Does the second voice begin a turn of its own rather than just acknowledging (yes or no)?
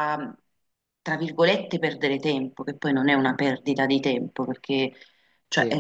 no